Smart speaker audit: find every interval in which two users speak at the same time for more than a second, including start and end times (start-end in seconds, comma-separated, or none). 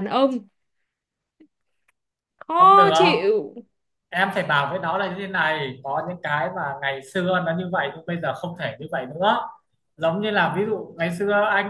none